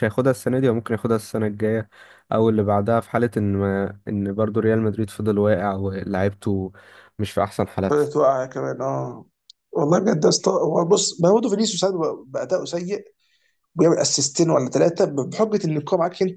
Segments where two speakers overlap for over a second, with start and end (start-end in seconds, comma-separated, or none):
none